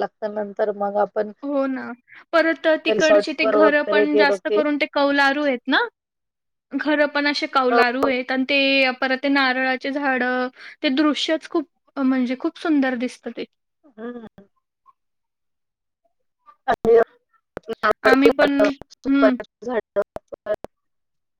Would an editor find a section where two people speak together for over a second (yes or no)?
yes